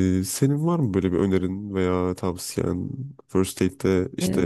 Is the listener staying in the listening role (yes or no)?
yes